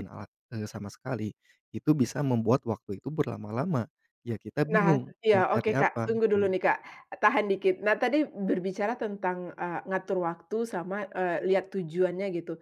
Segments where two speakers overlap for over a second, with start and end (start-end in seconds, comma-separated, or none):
4.7-6.5